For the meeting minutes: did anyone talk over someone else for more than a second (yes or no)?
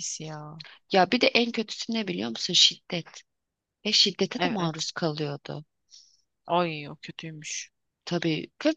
no